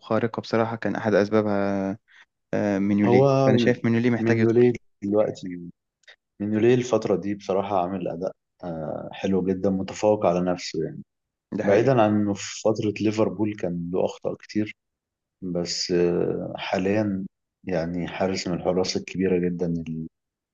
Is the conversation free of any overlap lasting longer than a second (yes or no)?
yes